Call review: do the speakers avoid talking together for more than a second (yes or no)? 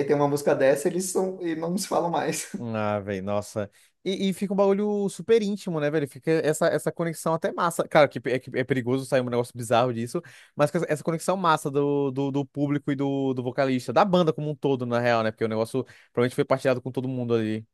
yes